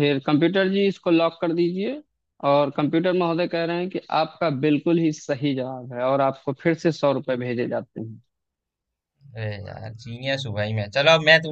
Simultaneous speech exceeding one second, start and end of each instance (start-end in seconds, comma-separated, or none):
none